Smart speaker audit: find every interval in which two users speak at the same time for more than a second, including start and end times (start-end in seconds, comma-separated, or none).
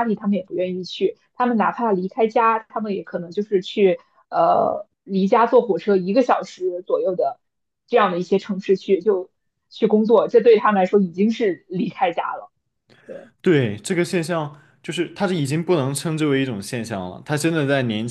none